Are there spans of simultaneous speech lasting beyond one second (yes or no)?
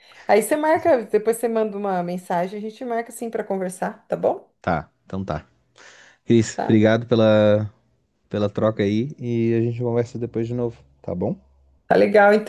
no